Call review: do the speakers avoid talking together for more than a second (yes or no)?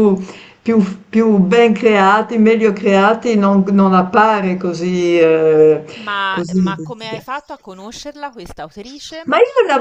yes